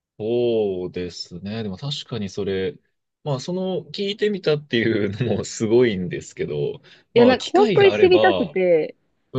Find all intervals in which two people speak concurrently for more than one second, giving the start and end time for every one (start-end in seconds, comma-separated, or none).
7.2-8.6